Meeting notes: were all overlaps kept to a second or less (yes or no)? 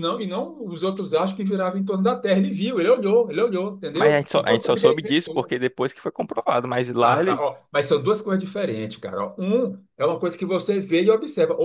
no